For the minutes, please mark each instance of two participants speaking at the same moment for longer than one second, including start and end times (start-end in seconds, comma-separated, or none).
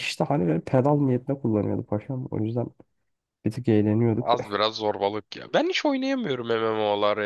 none